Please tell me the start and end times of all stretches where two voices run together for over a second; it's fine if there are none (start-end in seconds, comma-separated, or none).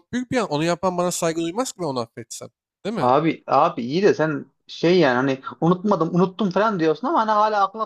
none